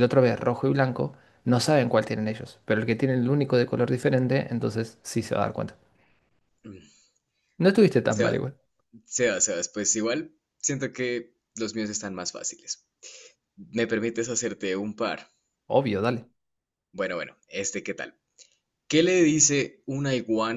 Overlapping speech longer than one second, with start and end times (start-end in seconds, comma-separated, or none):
none